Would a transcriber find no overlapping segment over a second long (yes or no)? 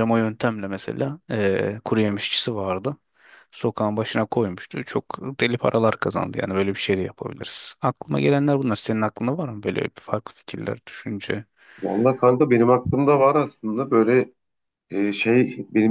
yes